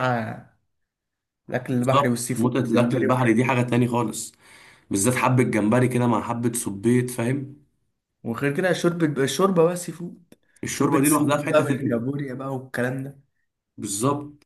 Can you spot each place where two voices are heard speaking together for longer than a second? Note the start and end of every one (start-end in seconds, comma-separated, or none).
1.8-3.4, 10.7-12.0